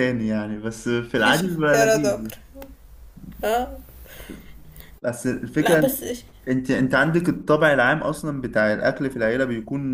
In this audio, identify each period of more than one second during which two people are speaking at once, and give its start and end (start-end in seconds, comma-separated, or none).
1.1-2.4